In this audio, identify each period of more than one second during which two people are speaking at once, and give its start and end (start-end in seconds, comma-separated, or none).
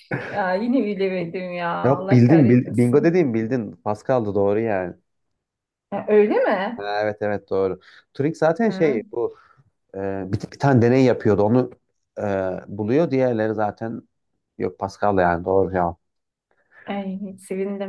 1.8-3.2